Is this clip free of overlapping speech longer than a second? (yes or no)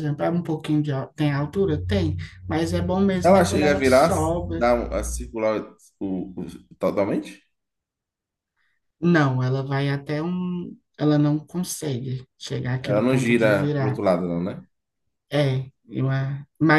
no